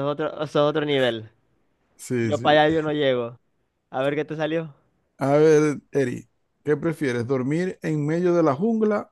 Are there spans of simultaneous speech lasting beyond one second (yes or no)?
no